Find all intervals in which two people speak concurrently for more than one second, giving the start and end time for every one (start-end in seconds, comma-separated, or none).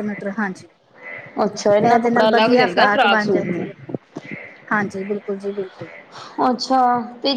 1.9-3.7